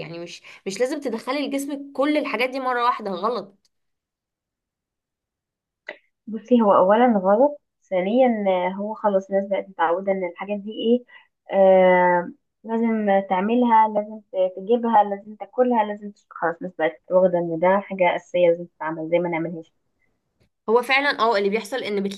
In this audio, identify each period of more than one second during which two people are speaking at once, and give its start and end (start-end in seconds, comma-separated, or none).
none